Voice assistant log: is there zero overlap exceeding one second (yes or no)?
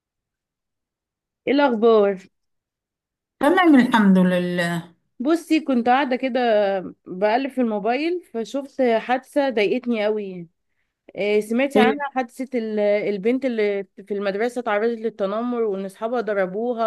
yes